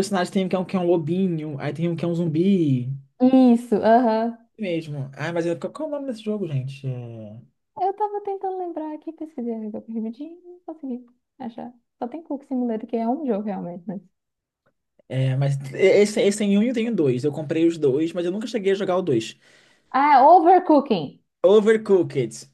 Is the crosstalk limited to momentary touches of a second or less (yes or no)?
yes